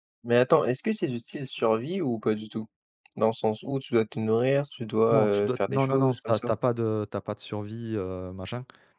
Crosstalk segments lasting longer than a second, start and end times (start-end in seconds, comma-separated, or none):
5.1-6.5